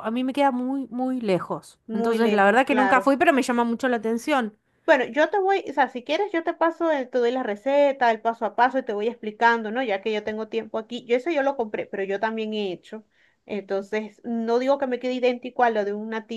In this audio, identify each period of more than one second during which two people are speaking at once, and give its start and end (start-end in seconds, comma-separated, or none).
1.9-3.1